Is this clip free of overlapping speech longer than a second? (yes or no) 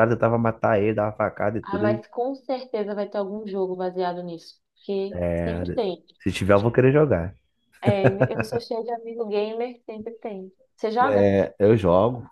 yes